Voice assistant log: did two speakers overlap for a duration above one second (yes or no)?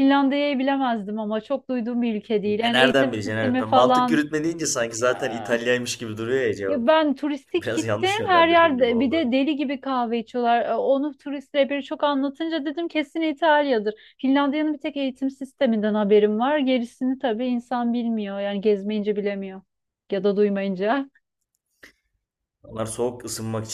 yes